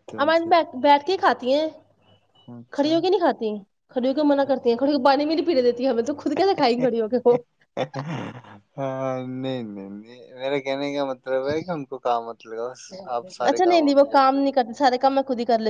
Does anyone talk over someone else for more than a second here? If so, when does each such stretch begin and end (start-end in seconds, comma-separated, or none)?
13.5-14.9